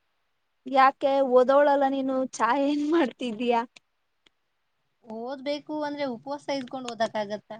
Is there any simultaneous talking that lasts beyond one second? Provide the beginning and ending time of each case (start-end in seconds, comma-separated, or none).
none